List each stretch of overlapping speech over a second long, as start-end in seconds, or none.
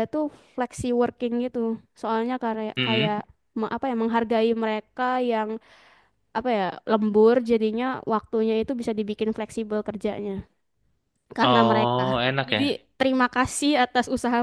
11.4-12.8